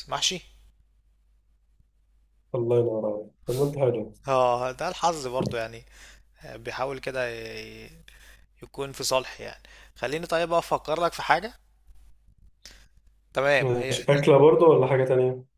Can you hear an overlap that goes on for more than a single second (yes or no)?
no